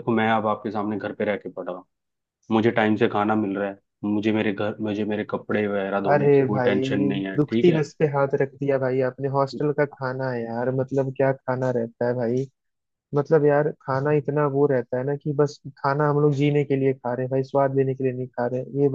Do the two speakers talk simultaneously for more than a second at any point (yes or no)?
yes